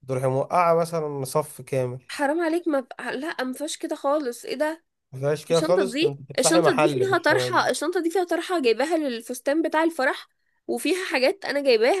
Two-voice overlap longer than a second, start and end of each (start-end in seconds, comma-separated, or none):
5.5-7.3